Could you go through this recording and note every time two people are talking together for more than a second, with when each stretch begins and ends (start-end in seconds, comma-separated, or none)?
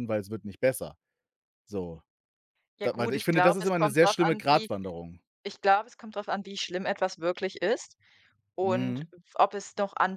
2.8-4.7